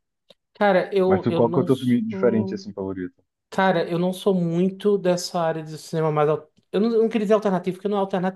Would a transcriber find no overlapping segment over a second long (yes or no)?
no